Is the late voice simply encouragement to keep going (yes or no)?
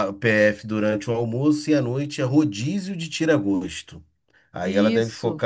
yes